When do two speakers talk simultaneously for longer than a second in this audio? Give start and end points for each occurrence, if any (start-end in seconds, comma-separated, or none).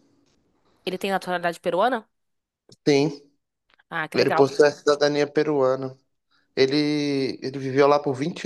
none